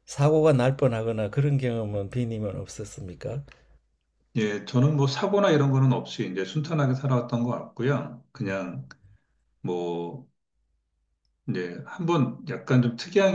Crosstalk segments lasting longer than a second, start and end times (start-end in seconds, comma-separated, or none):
none